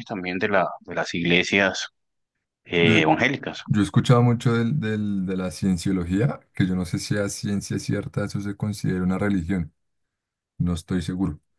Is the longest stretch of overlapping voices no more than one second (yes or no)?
yes